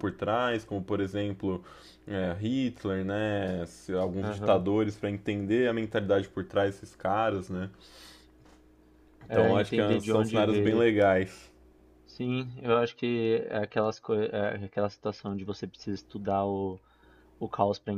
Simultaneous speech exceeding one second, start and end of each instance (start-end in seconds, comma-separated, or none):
9.3-10.8